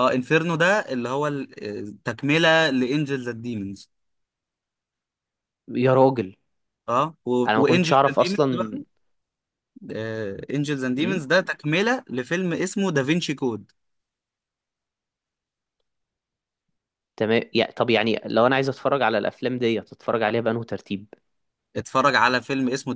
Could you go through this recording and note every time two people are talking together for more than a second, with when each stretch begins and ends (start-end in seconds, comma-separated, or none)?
7.5-8.8